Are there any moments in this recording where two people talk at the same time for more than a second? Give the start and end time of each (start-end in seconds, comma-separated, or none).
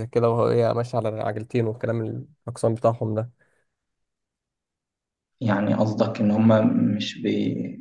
none